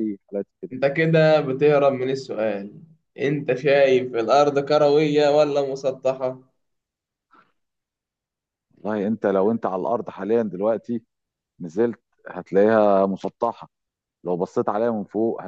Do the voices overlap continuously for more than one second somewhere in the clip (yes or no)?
no